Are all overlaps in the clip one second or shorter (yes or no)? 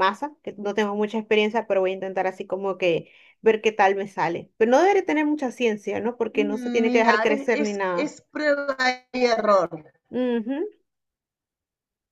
no